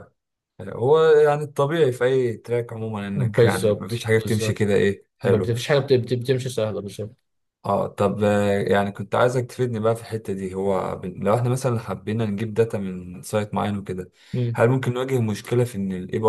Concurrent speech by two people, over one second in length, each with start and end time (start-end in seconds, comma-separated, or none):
3.1-4.6